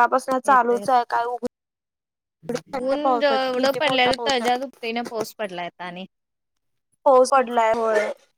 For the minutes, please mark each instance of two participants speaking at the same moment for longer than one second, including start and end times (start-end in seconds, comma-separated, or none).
3.0-4.6